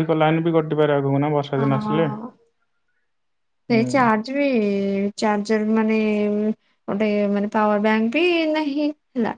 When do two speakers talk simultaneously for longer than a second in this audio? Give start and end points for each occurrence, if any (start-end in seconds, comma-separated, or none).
none